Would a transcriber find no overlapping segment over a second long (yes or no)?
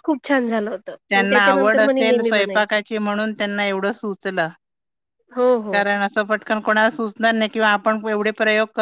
no